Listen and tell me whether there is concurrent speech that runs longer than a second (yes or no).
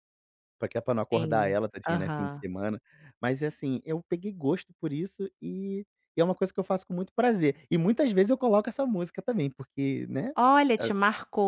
yes